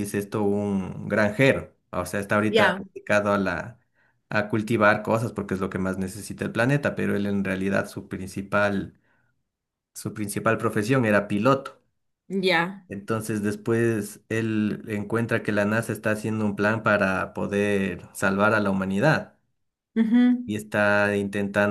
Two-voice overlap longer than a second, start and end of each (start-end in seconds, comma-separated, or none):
none